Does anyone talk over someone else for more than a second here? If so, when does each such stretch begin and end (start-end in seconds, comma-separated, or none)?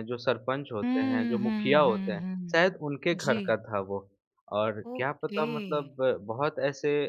0.8-2.6